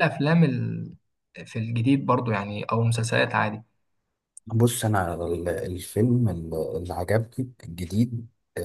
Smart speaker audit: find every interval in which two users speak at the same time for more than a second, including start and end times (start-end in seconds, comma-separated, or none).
none